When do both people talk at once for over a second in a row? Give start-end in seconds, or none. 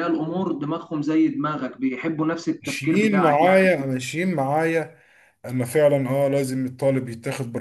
2.6-3.9